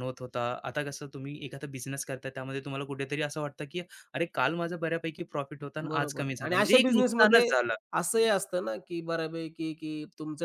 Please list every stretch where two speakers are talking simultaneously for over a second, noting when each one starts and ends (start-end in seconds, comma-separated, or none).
5.9-7.5